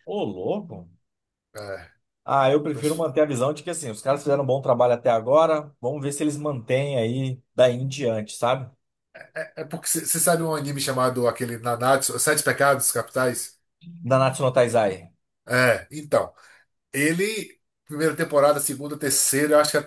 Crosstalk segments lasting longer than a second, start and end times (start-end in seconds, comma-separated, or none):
none